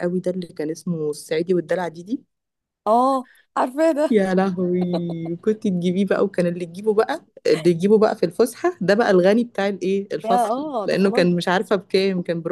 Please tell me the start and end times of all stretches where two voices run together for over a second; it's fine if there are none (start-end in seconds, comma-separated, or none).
10.2-11.5